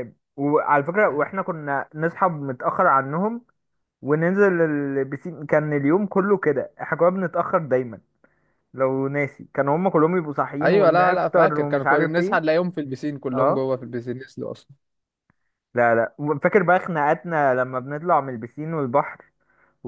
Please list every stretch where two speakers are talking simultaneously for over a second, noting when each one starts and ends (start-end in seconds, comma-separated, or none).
10.6-12.4